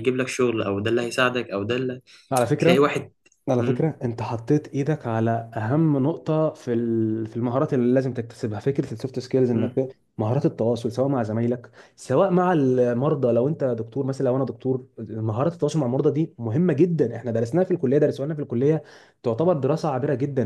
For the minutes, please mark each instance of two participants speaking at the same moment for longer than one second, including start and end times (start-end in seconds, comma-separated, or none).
none